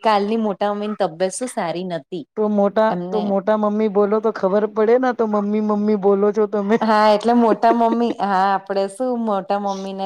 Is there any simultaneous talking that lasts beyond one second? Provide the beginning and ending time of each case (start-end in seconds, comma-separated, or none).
none